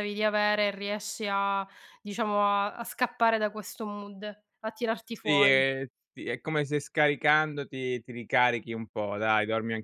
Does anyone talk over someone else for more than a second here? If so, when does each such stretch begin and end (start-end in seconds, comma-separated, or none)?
none